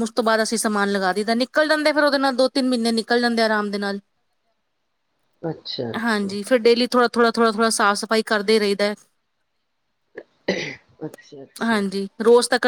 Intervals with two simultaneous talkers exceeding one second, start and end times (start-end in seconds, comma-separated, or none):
none